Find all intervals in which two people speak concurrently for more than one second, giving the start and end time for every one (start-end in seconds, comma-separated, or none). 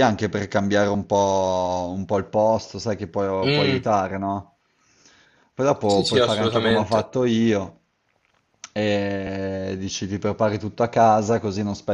5.9-7.1